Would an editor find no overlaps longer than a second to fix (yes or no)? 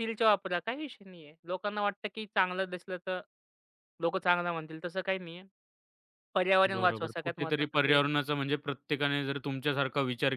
no